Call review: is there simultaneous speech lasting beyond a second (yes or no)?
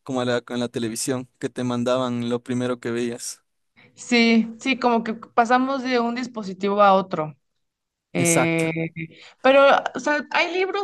no